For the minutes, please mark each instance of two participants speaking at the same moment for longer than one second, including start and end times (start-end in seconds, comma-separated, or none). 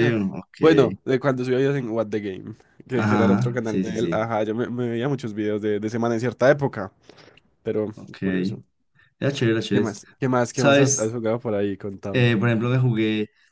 2.9-4.3